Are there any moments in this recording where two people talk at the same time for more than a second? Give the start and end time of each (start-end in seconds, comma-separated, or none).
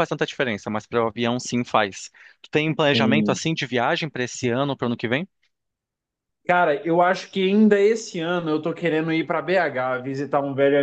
none